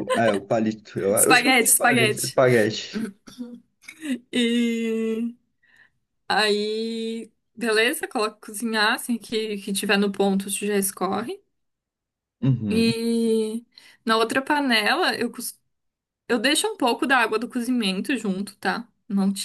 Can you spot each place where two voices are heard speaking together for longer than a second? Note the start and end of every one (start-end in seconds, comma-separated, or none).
1.1-2.4